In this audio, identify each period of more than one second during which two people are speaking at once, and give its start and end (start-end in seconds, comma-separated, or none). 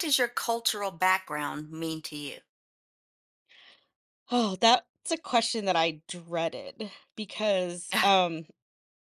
none